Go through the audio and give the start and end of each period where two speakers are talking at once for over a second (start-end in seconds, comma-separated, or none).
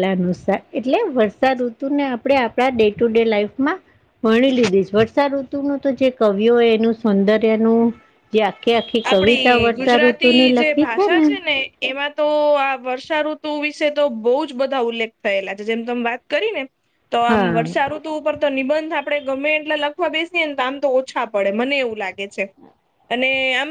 9.1-10.9